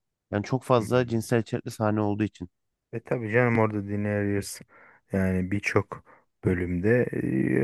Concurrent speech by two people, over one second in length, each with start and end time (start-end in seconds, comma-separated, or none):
none